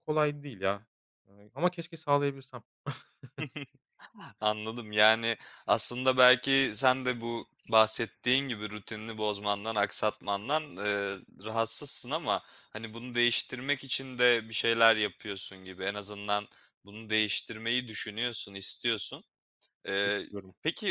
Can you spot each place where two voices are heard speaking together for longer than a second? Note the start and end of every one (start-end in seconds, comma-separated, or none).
none